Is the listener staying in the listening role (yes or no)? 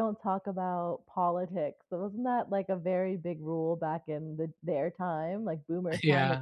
yes